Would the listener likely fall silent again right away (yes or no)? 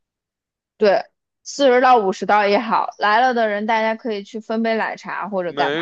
no